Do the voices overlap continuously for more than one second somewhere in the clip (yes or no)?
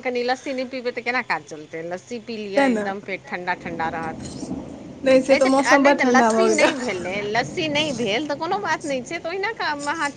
yes